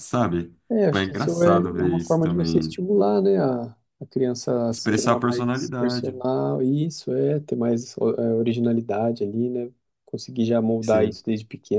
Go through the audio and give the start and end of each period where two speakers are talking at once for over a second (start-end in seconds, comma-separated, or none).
0.7-2.8, 4.7-6.2